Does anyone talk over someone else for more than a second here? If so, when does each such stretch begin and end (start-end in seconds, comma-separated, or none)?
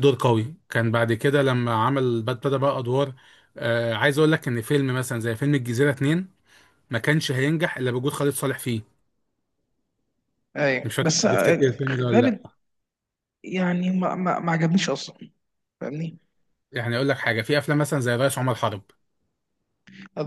10.8-12.5